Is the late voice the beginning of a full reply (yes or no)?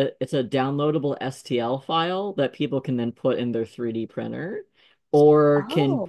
no